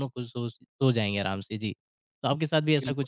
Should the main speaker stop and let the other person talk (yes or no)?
yes